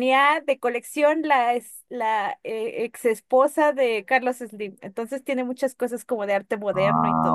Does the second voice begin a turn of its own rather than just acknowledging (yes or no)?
yes